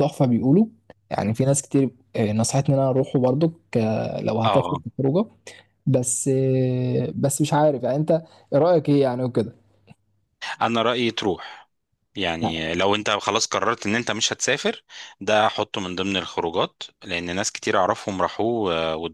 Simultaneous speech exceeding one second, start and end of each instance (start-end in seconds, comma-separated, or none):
none